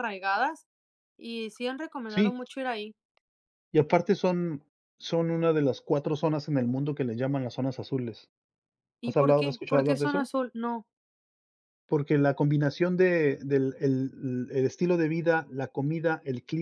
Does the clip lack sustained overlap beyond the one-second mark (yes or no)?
no